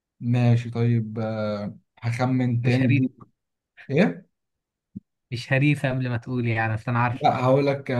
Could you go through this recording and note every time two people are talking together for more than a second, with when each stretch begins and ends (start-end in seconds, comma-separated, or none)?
none